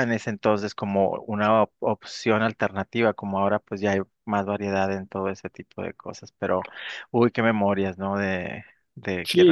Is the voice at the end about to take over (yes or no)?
yes